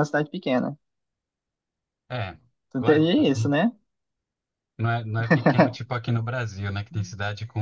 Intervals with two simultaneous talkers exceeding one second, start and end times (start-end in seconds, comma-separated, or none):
none